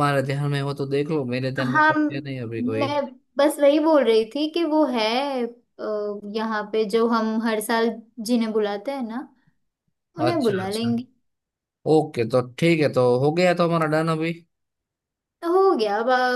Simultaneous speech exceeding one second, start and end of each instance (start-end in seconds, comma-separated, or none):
none